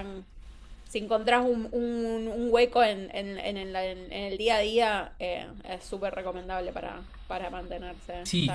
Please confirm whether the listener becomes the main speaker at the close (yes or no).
yes